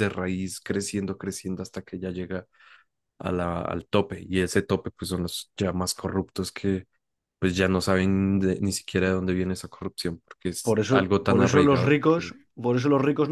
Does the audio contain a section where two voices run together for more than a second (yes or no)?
yes